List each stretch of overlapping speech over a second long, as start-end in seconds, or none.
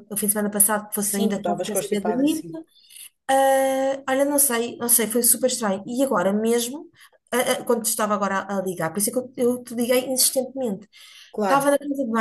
1.0-2.5